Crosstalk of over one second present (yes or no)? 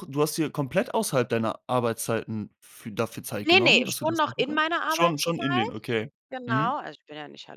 yes